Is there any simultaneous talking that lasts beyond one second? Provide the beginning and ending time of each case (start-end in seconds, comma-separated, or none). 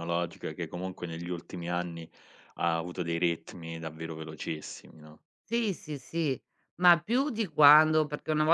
none